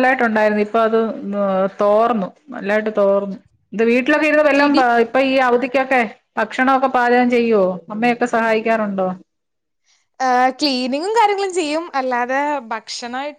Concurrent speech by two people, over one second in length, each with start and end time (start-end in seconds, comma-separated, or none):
none